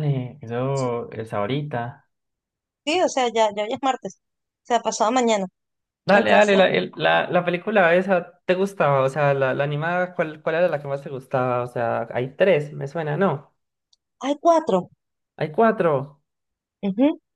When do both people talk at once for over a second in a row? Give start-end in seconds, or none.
none